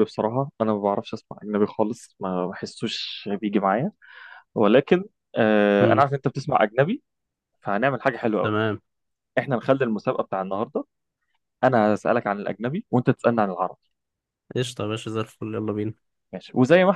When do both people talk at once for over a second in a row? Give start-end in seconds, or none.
none